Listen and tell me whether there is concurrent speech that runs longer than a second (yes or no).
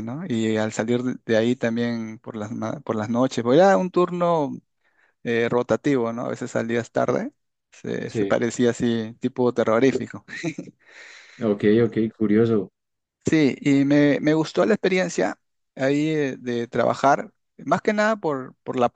no